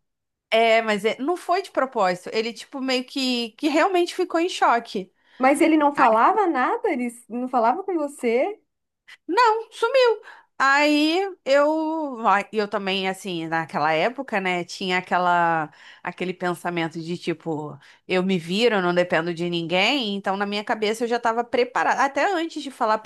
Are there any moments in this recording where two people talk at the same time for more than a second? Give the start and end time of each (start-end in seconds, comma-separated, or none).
none